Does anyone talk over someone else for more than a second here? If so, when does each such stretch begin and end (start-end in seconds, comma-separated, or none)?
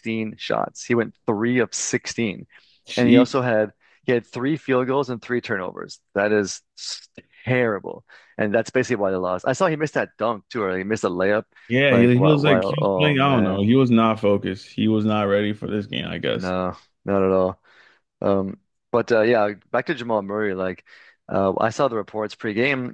11.9-13.6